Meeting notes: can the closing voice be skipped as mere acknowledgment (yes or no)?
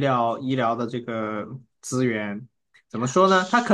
yes